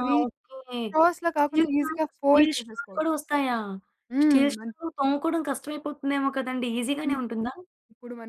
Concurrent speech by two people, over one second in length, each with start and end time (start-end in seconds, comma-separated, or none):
1.4-3.1